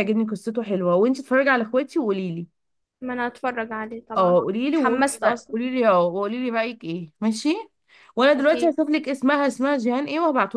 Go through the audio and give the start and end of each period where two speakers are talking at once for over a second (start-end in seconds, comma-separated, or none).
4.2-5.6